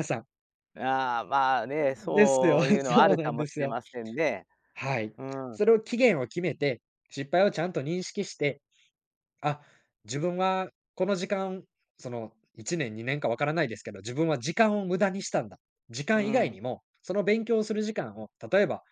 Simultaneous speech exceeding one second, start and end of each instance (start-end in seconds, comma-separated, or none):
1.8-3.8